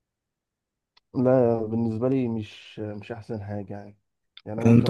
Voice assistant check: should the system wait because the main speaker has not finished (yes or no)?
yes